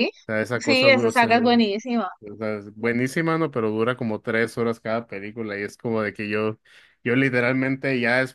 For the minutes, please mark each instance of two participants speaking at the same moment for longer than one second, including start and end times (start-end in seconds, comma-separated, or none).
0.6-1.8